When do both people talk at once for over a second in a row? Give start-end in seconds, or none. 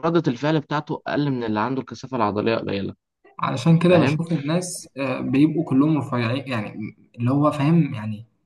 none